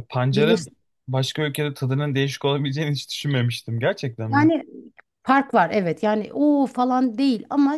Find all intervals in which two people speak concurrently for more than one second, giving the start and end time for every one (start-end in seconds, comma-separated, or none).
none